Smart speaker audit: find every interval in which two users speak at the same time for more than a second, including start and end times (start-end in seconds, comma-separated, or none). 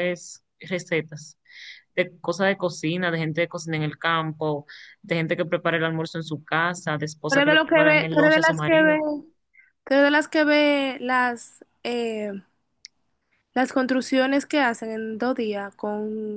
7.3-9.0